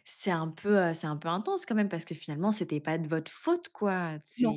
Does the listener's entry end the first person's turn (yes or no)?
no